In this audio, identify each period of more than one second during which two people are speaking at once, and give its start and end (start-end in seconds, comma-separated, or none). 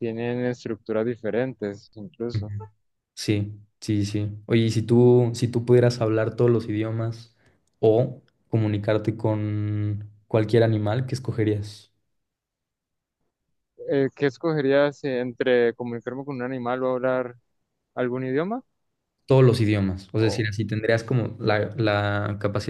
none